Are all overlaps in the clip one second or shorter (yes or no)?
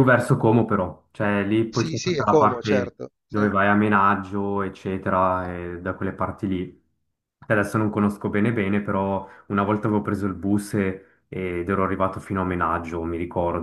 no